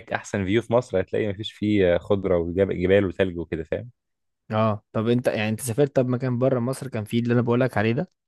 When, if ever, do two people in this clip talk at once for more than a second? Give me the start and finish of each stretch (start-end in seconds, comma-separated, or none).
none